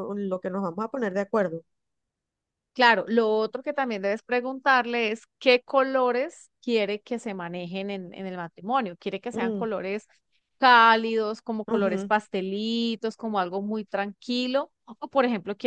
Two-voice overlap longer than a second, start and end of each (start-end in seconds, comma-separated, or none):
none